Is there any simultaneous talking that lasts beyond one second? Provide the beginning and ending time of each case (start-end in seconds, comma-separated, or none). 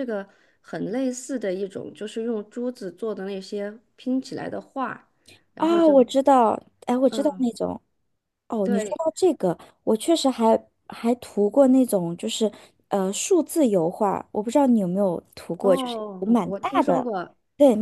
15.6-17.1